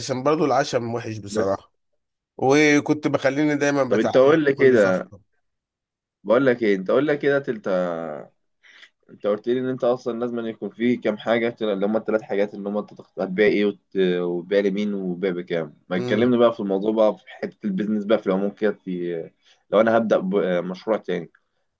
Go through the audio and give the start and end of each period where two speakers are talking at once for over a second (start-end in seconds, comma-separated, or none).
3.9-5.1